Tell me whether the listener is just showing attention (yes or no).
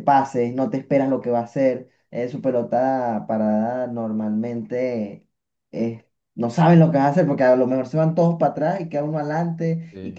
yes